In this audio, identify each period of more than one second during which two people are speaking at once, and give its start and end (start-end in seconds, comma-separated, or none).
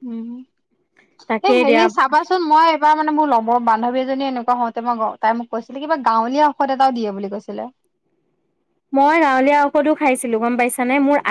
none